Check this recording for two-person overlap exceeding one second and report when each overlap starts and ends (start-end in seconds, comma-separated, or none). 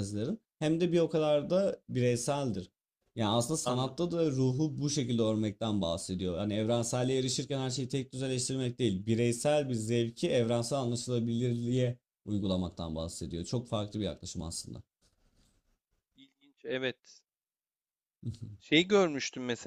none